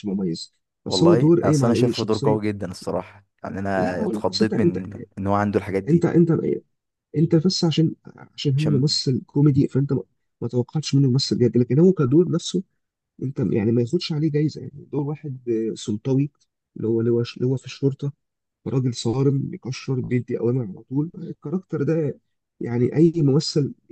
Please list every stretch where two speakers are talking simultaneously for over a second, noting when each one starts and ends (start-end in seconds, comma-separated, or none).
0.9-2.5, 3.8-5.0